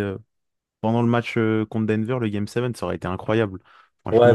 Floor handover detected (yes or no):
yes